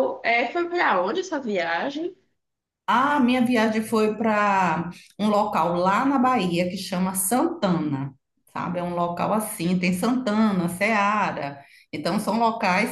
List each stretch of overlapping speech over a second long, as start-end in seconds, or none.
none